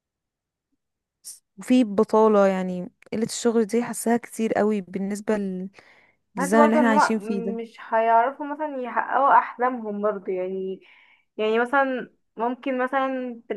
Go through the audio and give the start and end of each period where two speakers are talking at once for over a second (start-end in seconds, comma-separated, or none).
6.4-7.6